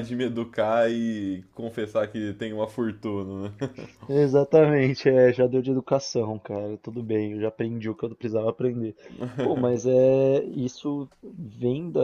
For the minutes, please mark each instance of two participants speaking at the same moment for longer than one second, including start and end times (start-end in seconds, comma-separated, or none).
none